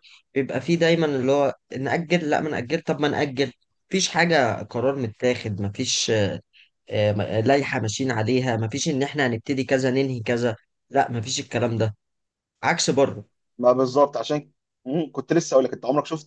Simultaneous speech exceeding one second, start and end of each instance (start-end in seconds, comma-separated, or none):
none